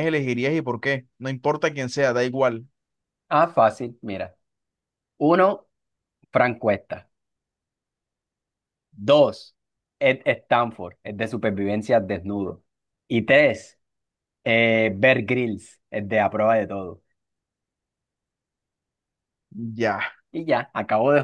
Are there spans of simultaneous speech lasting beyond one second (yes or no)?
no